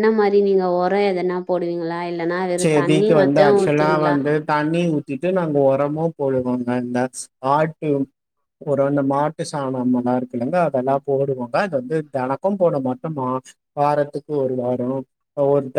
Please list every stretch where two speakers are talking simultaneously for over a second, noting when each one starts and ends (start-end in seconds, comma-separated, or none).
2.6-4.2